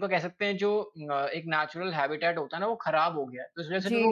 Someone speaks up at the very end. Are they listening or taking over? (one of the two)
taking over